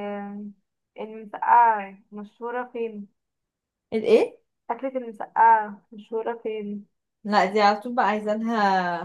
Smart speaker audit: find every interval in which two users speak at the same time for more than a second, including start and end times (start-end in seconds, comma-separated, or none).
none